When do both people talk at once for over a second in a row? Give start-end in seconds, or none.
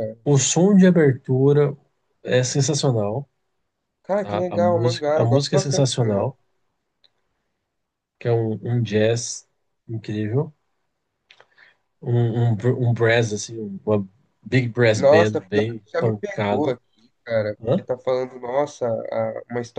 4.2-6.2, 15.0-16.8